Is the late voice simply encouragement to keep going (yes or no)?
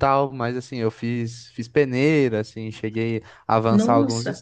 yes